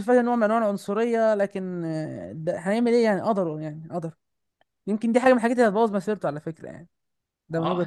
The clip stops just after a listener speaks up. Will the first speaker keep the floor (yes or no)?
no